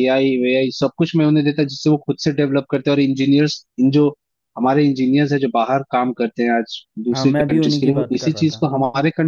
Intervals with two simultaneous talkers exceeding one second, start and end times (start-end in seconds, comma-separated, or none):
7.1-8.7